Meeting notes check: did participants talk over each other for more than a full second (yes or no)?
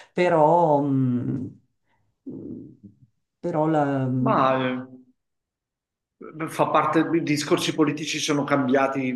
no